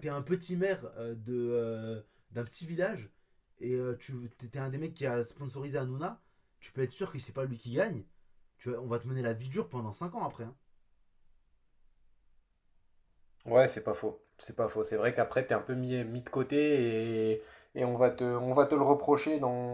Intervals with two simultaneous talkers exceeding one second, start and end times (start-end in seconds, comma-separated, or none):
none